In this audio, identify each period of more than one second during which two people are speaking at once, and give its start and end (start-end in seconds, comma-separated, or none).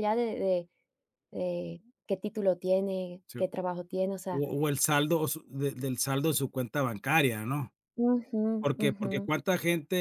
none